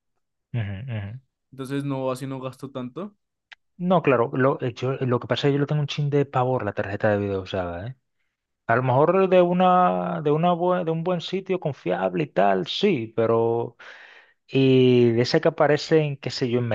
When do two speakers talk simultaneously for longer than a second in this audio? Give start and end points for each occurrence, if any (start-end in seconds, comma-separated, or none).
none